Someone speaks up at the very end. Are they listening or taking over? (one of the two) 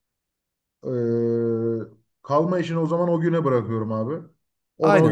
taking over